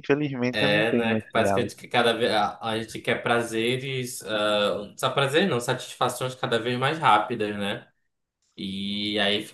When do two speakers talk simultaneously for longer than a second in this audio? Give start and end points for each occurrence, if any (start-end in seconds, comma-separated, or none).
0.5-1.8